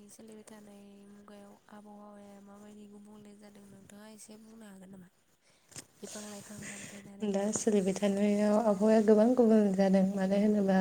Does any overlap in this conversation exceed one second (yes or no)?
no